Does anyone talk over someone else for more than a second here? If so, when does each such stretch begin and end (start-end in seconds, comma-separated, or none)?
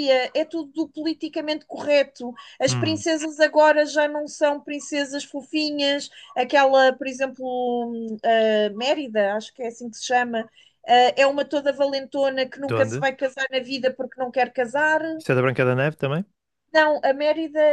none